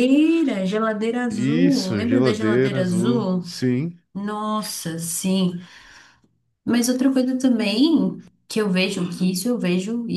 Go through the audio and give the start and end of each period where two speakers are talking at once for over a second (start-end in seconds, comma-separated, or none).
1.3-3.5